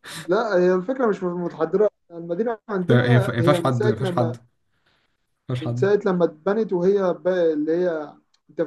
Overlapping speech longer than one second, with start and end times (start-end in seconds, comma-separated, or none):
2.9-4.4